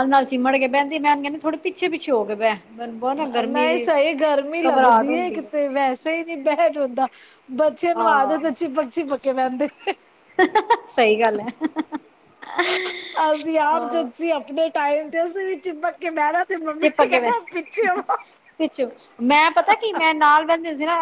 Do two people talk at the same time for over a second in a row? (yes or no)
no